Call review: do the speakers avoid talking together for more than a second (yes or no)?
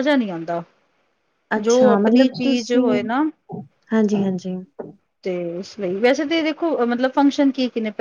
no